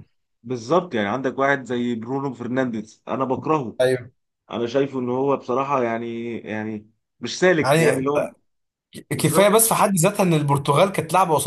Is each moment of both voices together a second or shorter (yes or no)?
yes